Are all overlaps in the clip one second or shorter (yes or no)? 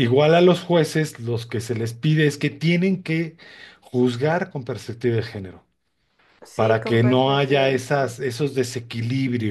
no